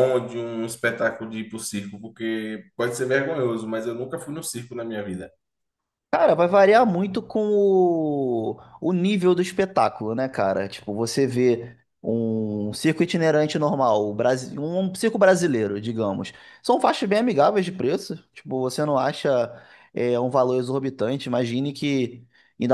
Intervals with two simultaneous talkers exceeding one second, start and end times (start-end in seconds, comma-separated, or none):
none